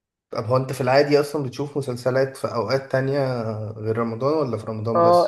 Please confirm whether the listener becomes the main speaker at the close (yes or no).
yes